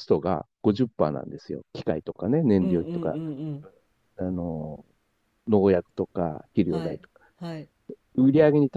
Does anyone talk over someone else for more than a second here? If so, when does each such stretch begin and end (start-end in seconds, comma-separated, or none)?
none